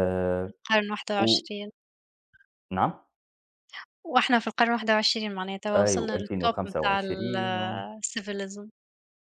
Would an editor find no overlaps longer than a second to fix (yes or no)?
no